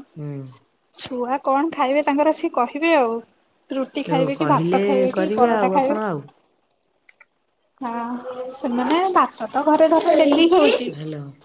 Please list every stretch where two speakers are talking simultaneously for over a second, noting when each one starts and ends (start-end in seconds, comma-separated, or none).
4.1-6.0